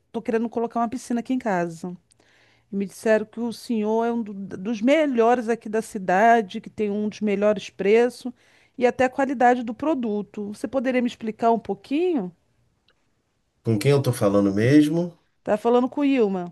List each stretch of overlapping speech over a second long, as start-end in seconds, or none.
none